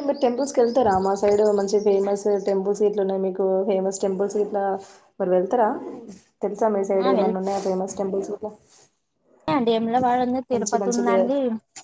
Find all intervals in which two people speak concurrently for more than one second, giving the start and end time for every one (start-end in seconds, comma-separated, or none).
none